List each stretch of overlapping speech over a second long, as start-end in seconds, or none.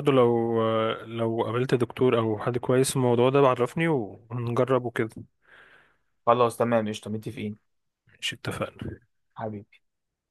none